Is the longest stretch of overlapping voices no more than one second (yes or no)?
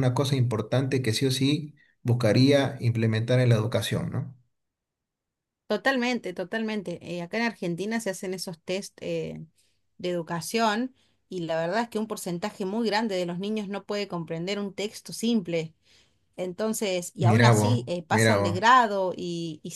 no